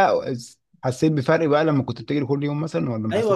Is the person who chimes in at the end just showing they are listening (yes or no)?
no